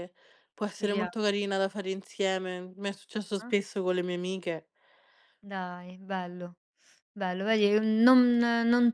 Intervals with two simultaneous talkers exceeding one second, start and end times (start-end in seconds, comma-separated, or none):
none